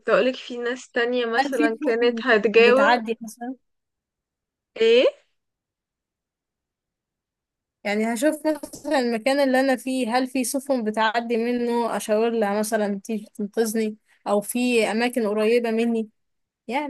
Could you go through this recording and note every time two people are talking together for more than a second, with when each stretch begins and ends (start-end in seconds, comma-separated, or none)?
1.4-3.0